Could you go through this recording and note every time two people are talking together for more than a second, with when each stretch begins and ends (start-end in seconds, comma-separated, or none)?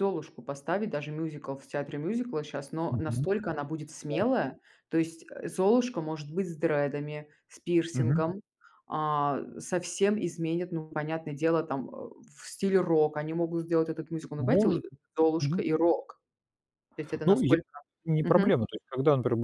none